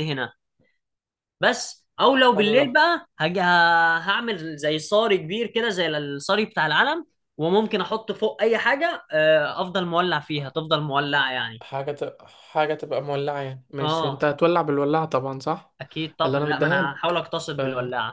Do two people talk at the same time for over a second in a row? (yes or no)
yes